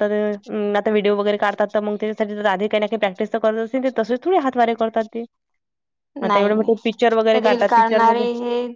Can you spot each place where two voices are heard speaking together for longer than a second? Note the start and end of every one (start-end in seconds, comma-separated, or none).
6.3-8.3